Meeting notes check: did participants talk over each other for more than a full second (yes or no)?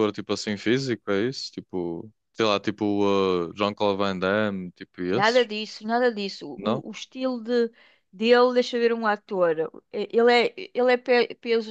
no